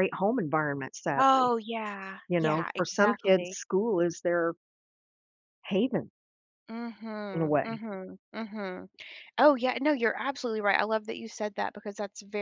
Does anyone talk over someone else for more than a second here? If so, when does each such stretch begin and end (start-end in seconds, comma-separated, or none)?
2.3-3.6